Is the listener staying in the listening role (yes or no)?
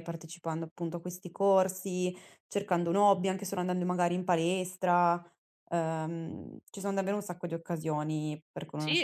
no